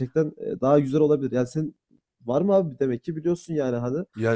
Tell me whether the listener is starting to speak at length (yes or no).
yes